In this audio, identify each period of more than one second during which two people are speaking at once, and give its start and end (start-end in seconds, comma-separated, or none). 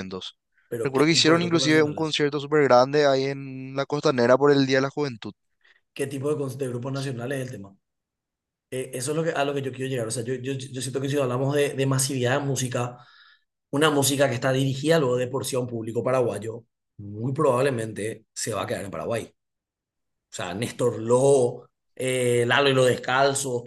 0.8-2.2